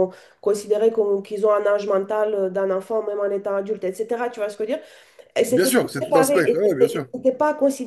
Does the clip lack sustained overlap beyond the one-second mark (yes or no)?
no